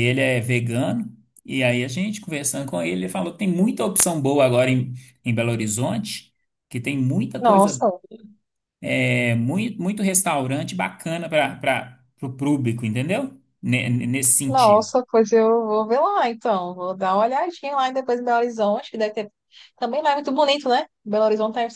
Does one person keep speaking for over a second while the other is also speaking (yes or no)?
no